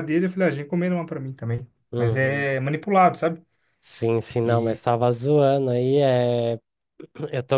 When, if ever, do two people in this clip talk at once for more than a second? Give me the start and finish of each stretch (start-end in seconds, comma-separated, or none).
none